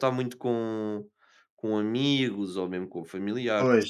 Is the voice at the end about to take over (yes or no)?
yes